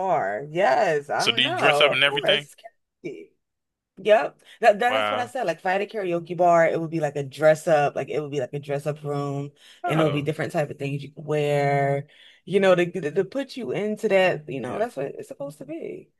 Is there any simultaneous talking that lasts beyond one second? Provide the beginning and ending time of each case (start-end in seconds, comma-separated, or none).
1.2-2.5